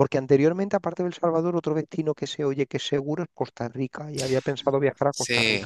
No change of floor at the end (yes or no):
no